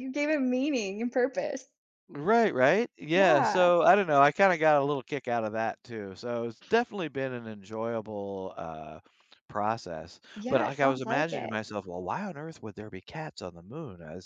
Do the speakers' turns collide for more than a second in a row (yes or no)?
yes